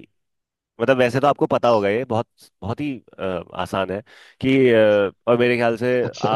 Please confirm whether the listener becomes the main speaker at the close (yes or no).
no